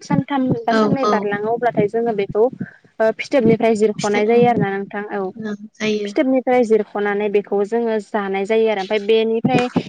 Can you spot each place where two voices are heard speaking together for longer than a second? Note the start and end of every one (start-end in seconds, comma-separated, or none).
none